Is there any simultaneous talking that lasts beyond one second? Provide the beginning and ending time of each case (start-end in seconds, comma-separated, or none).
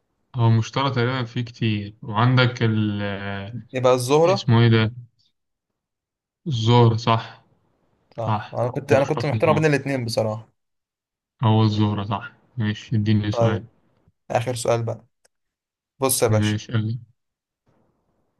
8.3-9.6